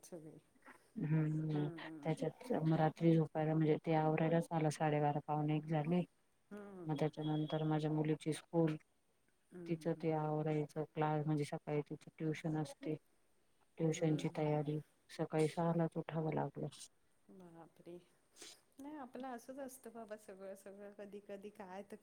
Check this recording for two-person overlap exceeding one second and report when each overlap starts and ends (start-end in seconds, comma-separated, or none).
none